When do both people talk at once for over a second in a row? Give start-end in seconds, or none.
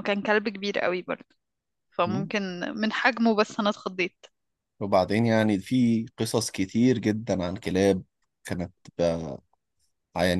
none